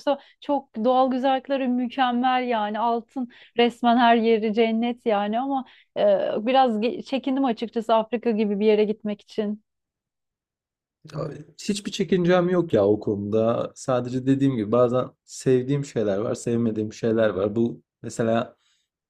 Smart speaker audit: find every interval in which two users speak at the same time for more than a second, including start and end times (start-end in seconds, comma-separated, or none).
none